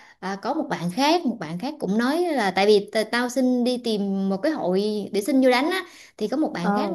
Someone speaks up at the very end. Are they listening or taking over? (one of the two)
listening